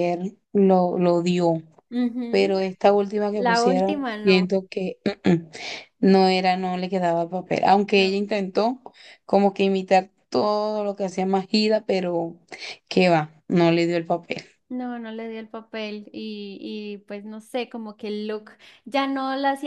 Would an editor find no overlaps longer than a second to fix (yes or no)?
no